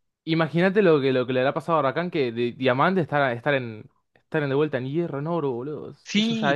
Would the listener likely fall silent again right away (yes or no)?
no